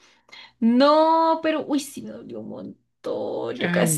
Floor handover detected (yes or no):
no